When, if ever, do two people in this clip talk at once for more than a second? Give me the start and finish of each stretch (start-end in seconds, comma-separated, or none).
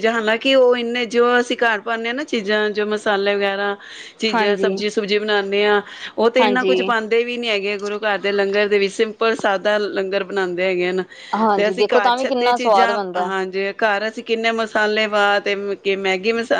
11.6-13.3